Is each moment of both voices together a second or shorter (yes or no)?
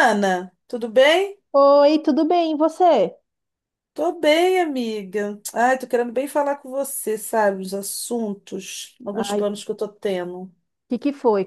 yes